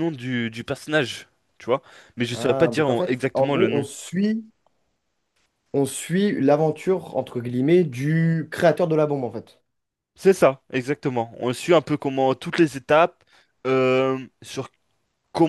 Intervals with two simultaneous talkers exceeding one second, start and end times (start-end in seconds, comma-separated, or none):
2.3-3.8